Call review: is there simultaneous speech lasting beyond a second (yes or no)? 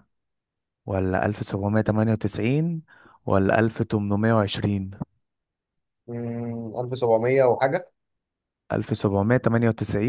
no